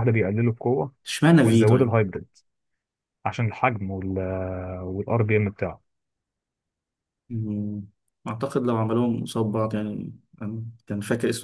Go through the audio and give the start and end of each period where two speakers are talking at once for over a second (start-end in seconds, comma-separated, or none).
none